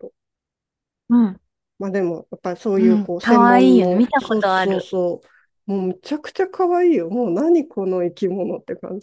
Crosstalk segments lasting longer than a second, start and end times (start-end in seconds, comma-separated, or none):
2.8-5.0